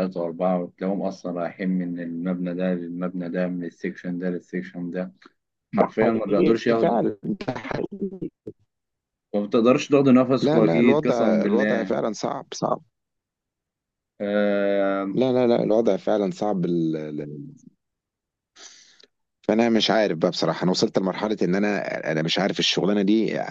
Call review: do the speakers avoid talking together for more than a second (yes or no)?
no